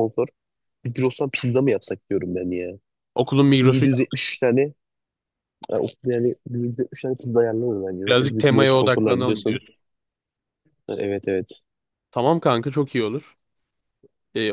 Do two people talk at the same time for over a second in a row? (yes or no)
yes